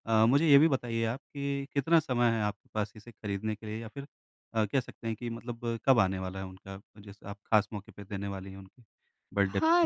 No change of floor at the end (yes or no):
no